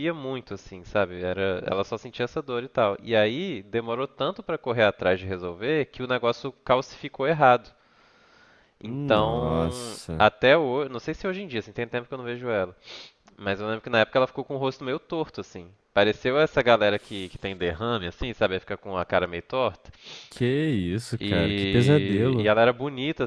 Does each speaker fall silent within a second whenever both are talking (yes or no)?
no